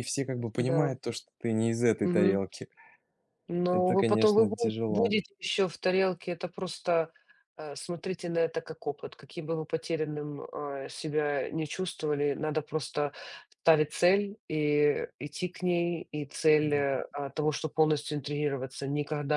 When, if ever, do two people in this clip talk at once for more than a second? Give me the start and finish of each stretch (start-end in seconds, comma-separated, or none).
3.7-5.2